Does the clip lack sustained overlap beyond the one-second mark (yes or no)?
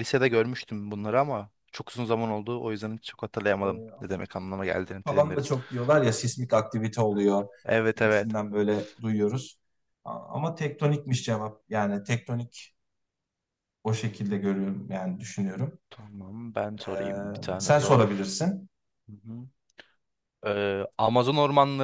no